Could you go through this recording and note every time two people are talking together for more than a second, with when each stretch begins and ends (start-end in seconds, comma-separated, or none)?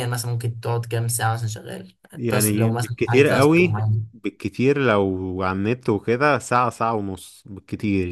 2.1-4.1